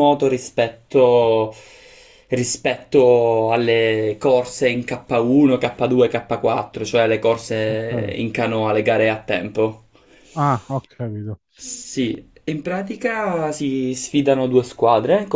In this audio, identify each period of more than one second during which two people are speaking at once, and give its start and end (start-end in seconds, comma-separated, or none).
none